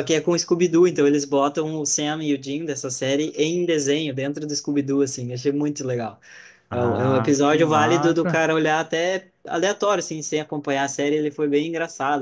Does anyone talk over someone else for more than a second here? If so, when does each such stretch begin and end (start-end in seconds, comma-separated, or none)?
6.7-8.4